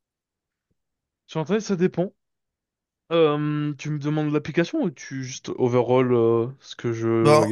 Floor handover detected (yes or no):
yes